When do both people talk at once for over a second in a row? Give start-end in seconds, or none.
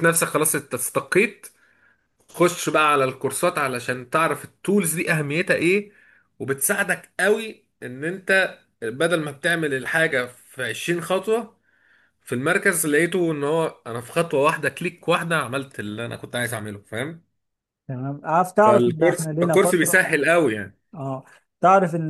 18.6-20.0